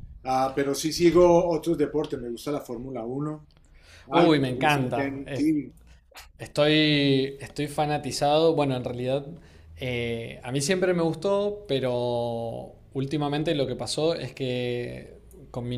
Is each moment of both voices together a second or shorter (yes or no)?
no